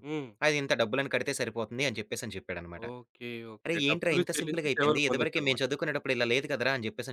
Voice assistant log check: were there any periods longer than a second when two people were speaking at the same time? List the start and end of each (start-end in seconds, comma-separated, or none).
3.7-5.6